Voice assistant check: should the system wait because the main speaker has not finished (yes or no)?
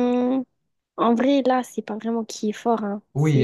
no